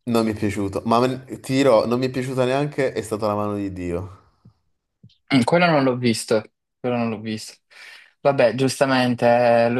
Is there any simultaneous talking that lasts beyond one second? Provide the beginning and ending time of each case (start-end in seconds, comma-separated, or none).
none